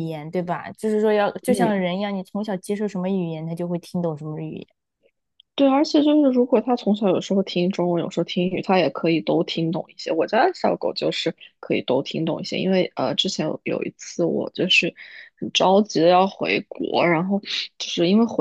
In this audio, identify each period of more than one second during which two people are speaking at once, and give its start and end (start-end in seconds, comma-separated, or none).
none